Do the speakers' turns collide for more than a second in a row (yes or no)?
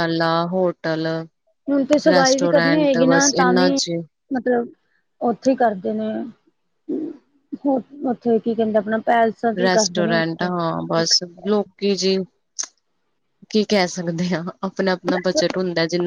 yes